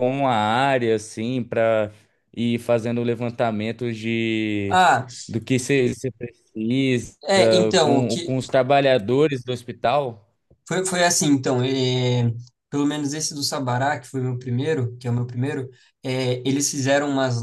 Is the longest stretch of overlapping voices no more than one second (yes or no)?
yes